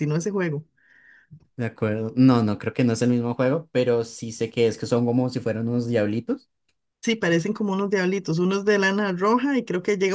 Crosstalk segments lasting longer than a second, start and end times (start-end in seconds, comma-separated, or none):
none